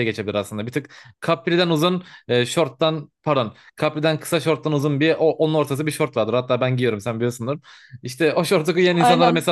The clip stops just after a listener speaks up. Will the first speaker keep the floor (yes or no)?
yes